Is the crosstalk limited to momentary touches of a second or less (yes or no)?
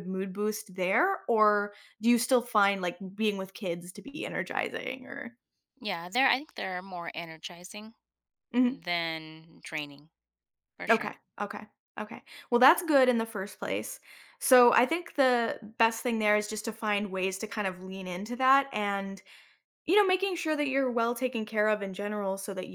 yes